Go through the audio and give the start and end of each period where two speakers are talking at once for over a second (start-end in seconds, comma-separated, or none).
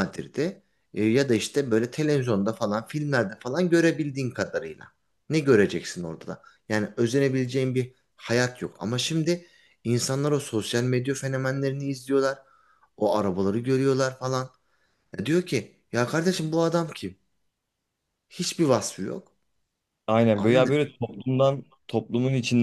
none